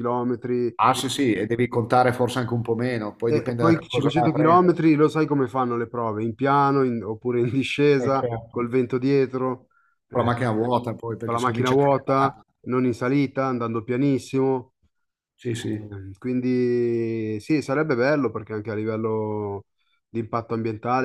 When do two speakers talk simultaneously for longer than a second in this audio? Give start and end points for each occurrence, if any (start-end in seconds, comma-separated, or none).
3.3-4.8, 11.2-12.4